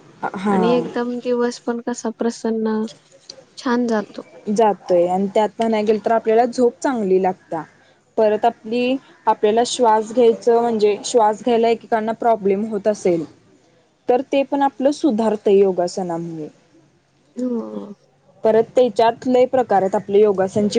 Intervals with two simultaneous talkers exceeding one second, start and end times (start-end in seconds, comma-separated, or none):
none